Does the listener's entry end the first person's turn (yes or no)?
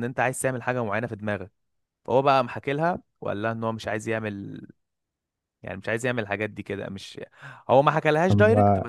no